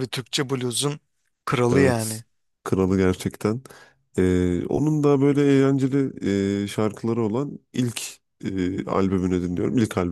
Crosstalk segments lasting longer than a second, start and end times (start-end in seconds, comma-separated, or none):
none